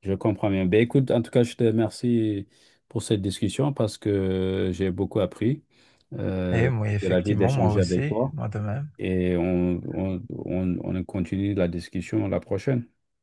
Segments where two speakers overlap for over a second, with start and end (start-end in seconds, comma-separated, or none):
6.5-8.3